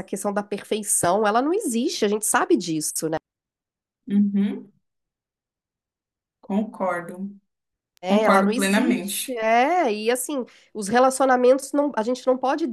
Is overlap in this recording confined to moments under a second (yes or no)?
no